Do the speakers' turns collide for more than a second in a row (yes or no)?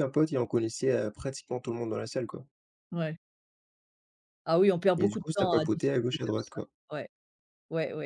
yes